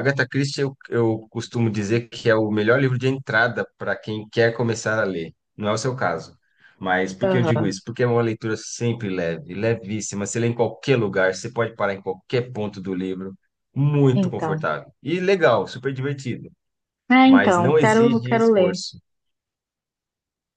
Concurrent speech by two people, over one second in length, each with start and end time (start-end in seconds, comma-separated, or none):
17.2-18.8